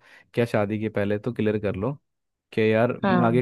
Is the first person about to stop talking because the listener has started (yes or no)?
no